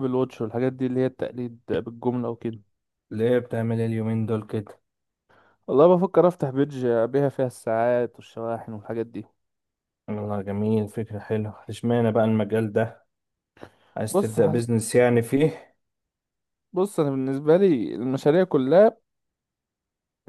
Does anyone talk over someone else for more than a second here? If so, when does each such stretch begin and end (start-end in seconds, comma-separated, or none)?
none